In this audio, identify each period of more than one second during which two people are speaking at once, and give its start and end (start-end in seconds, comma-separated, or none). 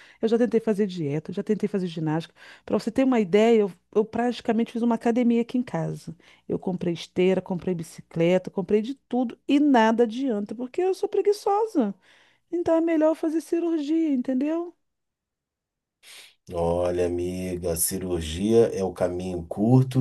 none